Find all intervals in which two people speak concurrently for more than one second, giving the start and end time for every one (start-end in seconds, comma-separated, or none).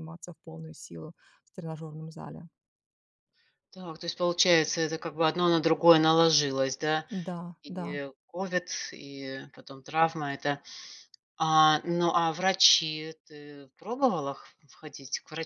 none